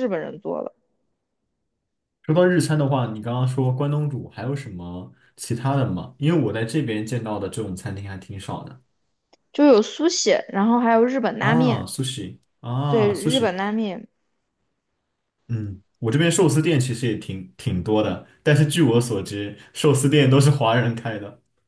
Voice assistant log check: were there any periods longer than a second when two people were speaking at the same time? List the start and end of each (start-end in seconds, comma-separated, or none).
none